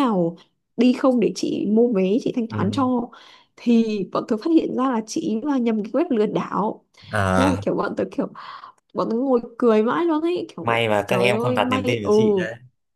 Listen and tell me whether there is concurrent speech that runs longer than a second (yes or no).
yes